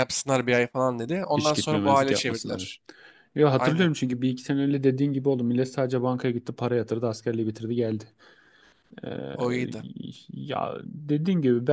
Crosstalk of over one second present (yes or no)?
yes